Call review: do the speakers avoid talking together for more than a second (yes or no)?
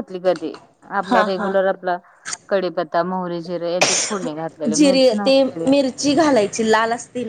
yes